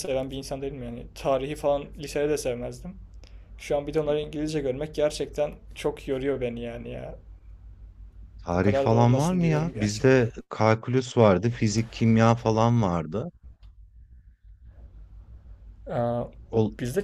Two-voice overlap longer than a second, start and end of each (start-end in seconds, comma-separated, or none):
8.5-10.2